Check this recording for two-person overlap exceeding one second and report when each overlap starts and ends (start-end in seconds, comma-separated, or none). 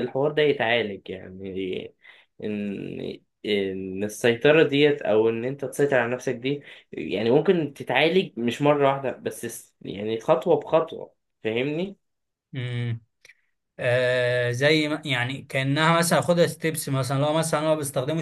none